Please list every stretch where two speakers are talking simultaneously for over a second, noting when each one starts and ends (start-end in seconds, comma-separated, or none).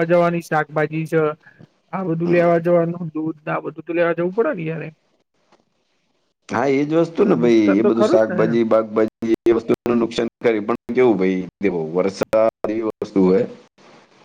7.0-8.6